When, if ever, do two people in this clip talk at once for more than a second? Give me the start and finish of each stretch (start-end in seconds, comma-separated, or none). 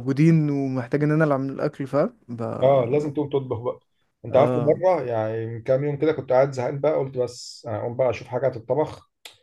none